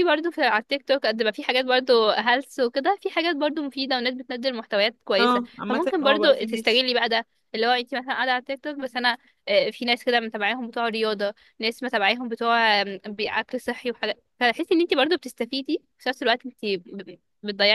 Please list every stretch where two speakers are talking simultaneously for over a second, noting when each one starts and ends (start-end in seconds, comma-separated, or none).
5.2-6.8